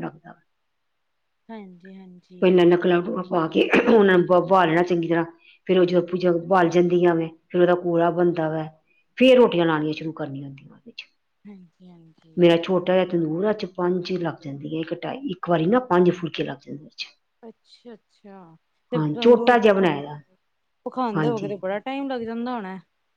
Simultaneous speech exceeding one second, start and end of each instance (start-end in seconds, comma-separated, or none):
none